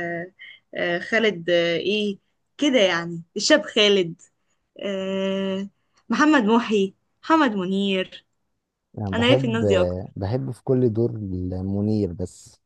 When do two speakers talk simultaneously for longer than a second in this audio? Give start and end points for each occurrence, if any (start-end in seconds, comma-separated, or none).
none